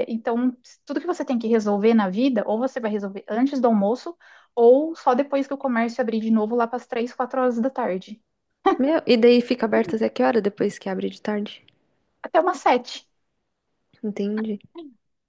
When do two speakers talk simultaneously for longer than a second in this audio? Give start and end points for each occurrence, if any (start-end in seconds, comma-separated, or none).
none